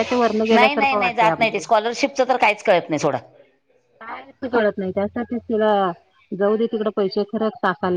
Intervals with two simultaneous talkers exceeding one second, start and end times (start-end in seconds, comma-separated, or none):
0.5-1.8